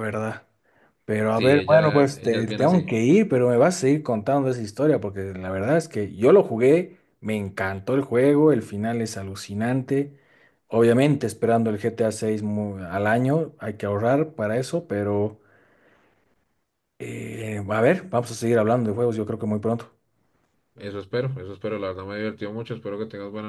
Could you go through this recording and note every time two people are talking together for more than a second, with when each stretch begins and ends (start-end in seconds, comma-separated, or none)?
1.3-2.9